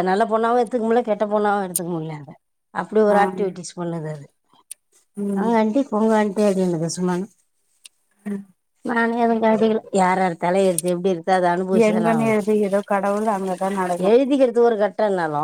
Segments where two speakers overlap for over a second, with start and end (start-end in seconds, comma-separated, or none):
none